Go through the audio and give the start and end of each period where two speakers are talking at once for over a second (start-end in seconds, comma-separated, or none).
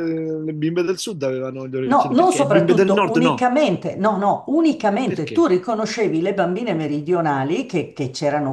1.8-3.5